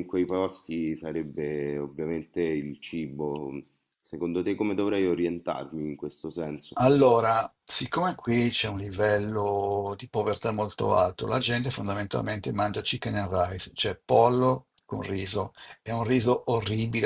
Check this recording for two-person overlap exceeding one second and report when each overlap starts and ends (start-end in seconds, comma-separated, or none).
none